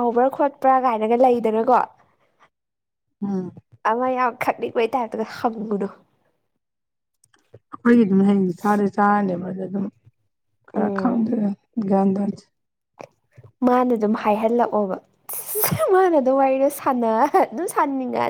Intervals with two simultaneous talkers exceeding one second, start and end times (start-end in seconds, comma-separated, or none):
none